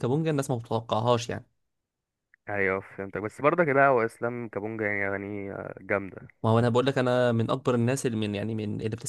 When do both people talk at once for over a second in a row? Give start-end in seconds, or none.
none